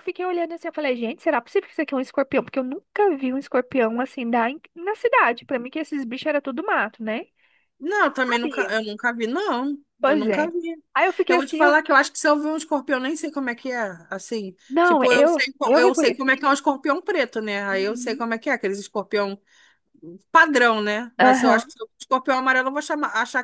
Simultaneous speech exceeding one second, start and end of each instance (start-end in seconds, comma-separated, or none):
14.7-16.4